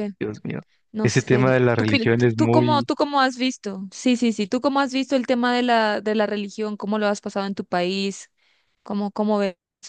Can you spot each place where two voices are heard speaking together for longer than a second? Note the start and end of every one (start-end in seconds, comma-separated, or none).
1.0-2.9